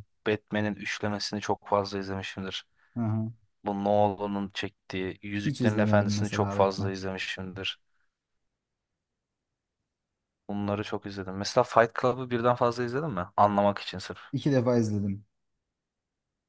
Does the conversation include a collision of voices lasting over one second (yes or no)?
yes